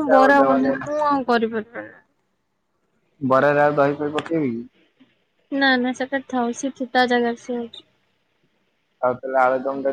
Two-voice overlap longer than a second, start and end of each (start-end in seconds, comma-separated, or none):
none